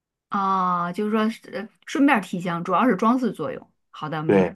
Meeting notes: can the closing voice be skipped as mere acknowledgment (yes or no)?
no